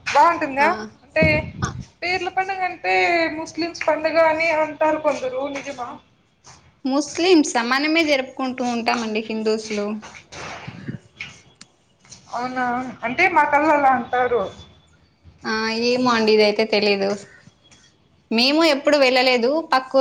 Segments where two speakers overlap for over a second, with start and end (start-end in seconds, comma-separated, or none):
none